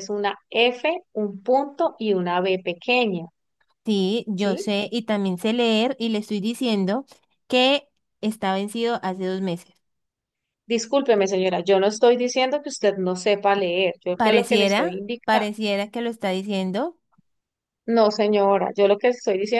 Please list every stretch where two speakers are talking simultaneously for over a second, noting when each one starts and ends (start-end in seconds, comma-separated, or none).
14.2-15.5